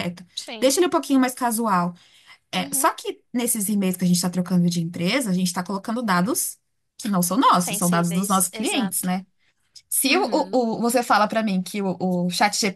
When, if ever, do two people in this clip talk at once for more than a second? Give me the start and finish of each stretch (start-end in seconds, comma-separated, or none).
7.6-9.1